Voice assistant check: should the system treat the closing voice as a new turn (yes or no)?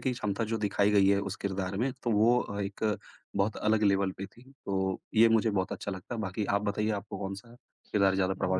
yes